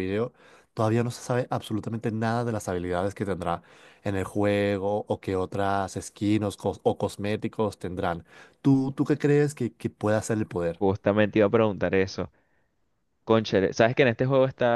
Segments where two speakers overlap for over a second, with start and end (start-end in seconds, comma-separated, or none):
none